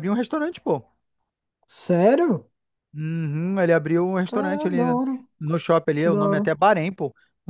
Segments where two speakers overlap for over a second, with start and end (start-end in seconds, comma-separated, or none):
none